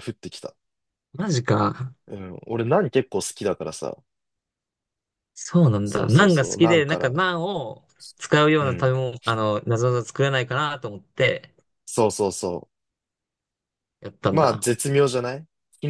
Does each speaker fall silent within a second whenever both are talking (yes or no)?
no